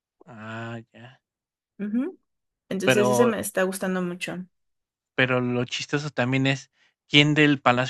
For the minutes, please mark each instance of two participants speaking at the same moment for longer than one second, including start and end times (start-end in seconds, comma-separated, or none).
none